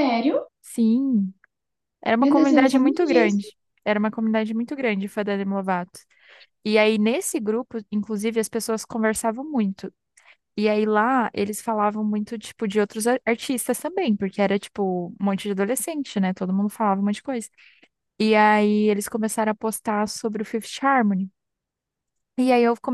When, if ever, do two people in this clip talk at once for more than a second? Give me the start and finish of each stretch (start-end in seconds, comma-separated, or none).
2.2-3.4